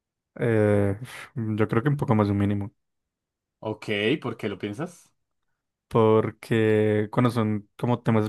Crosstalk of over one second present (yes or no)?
no